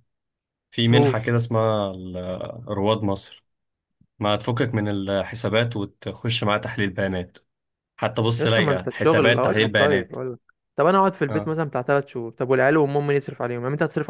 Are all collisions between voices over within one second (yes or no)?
no